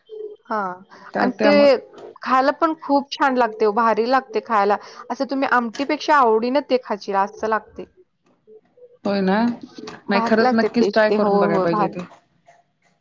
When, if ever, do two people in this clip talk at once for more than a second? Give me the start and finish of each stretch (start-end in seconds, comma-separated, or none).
10.1-11.9